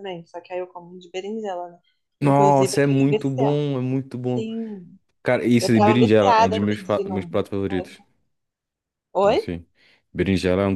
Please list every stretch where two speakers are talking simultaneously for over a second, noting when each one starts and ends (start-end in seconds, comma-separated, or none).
2.2-3.6, 5.6-7.4